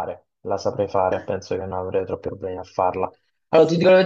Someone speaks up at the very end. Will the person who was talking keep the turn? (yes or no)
yes